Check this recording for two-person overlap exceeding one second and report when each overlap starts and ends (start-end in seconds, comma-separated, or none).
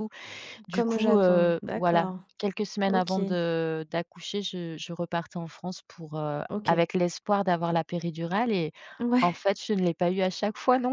0.7-2.2